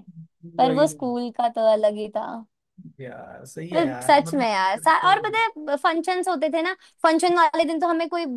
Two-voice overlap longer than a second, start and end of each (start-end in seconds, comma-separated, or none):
3.7-5.4